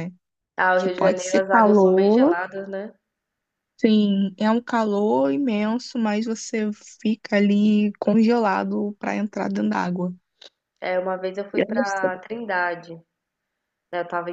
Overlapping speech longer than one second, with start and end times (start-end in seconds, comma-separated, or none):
0.8-2.4